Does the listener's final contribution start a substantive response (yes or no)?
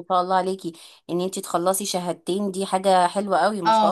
yes